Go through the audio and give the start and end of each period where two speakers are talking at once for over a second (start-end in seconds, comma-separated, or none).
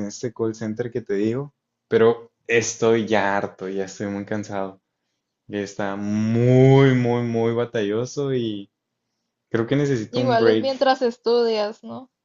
none